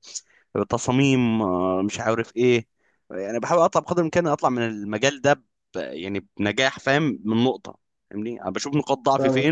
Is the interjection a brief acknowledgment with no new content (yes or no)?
yes